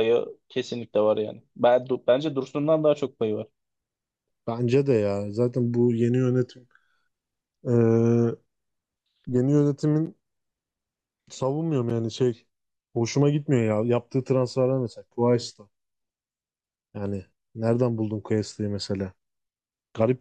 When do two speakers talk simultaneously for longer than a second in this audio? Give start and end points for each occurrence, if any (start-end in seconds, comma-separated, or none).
none